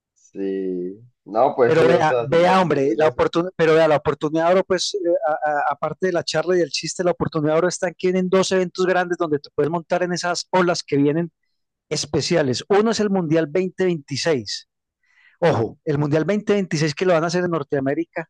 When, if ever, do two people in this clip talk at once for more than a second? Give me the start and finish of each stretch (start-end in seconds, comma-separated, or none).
1.6-3.3